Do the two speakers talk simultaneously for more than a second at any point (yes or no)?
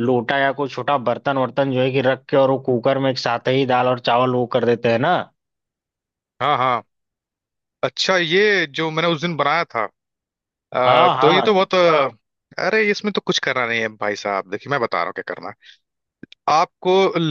no